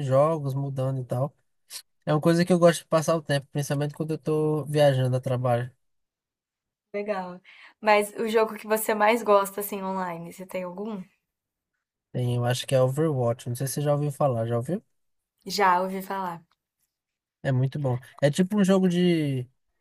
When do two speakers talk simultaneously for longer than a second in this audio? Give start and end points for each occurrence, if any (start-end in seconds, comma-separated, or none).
none